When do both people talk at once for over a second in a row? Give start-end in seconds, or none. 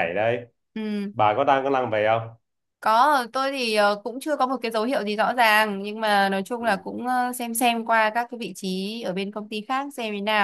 none